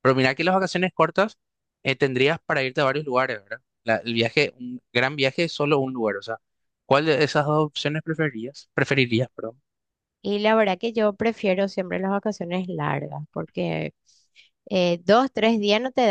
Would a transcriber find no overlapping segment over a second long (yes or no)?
yes